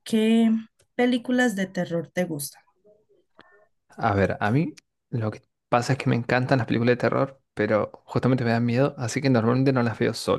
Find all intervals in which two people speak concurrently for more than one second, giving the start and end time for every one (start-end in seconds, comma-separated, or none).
none